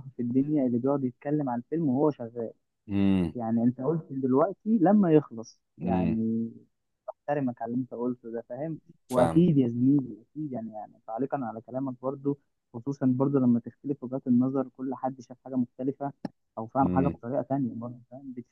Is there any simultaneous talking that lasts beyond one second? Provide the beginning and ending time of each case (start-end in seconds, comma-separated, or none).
none